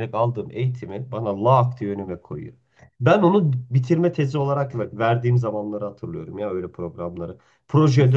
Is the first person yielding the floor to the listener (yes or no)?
no